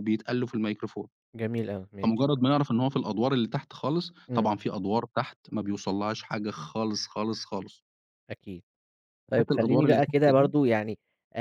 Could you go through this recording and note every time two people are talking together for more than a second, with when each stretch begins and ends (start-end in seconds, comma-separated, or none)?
9.3-10.5